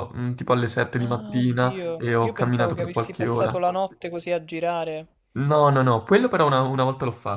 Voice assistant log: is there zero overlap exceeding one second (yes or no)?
no